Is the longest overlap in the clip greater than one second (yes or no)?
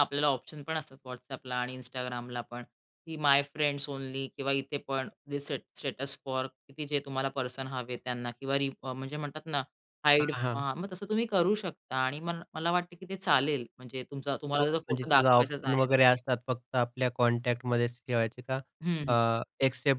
yes